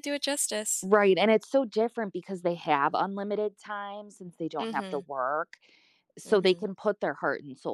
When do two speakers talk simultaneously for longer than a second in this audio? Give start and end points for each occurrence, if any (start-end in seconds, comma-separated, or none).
none